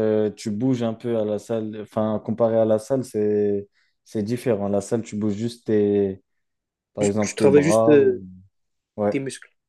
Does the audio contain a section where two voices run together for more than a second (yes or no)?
yes